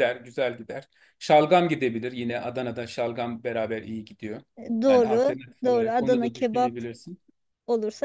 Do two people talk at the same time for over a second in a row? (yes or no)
yes